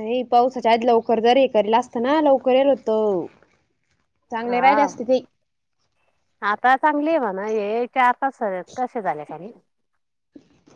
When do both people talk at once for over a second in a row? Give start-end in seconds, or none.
none